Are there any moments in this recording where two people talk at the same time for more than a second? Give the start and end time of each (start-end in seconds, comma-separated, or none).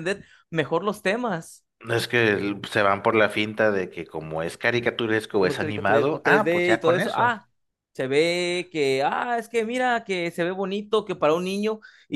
5.4-7.3